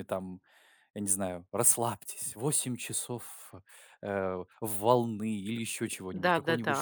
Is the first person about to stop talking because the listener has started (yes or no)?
yes